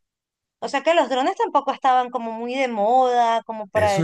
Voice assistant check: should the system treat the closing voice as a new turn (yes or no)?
yes